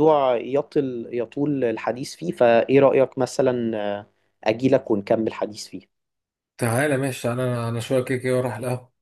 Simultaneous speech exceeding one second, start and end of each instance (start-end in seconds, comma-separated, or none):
none